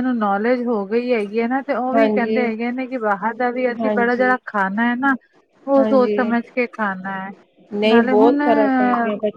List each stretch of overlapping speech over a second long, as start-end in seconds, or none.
none